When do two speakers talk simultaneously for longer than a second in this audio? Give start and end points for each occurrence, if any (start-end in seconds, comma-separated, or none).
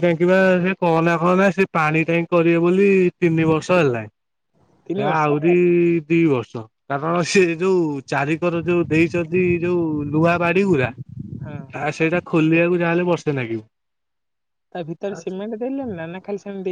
none